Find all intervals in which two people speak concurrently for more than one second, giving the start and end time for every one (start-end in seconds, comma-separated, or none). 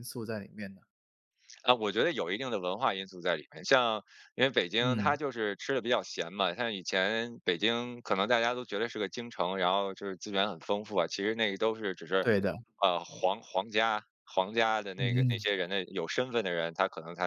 none